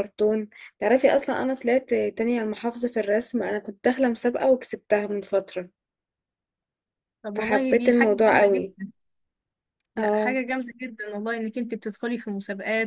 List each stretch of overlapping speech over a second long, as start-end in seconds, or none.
7.3-8.7